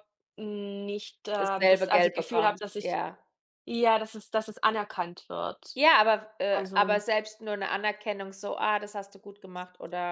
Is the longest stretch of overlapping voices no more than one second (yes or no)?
no